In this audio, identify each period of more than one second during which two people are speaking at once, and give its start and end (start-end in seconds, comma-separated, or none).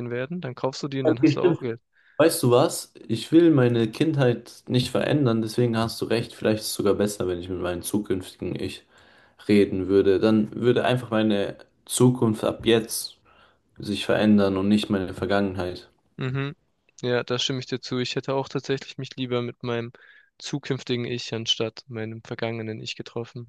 none